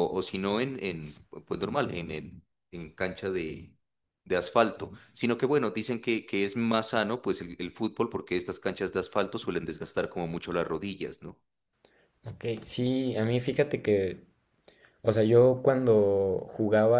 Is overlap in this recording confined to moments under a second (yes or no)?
yes